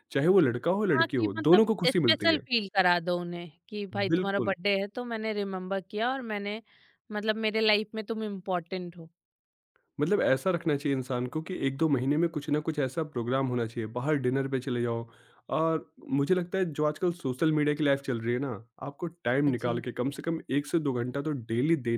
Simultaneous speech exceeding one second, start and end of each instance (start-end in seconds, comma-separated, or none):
0.9-2.5